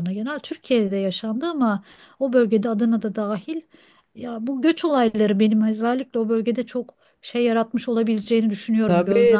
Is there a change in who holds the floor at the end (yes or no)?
yes